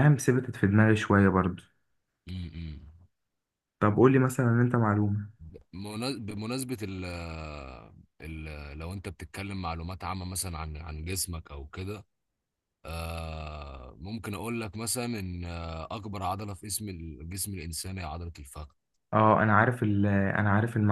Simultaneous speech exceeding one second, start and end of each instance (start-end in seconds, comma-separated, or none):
none